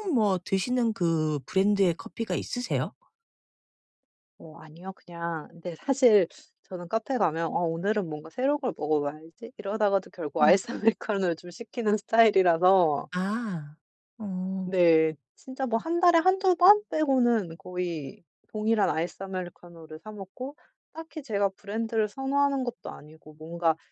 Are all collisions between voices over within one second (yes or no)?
yes